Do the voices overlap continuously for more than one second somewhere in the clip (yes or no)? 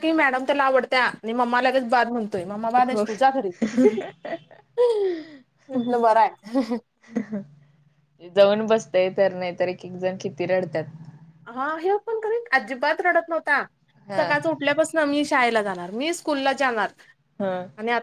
no